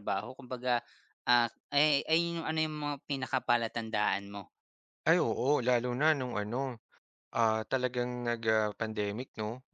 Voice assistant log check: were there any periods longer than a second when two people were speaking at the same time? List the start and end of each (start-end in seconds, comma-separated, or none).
none